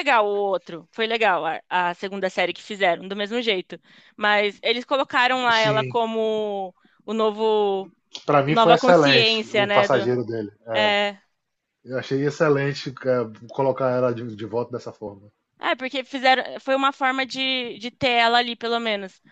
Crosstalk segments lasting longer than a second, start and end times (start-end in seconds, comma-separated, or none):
8.5-10.1